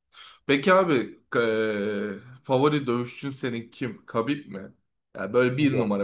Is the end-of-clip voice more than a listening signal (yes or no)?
no